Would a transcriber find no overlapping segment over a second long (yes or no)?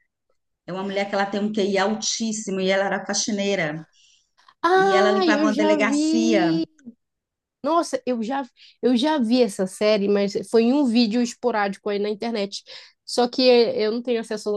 no